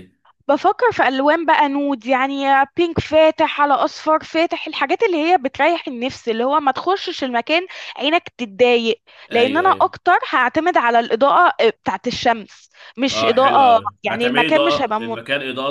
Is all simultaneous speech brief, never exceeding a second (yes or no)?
no